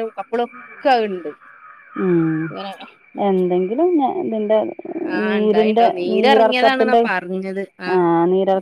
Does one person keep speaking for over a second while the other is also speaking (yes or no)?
yes